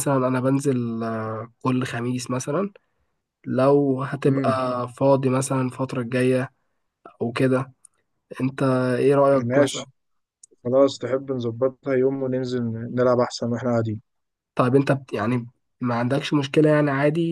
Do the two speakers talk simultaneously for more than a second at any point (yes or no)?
no